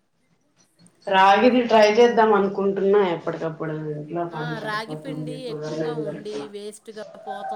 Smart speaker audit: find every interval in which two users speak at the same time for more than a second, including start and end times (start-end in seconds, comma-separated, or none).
4.4-6.5